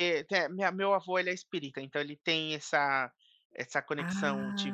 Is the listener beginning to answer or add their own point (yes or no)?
no